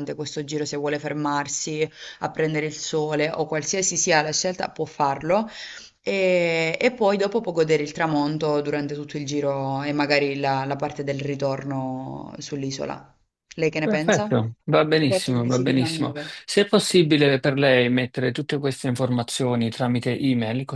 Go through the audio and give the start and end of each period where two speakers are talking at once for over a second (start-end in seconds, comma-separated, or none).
15.0-16.3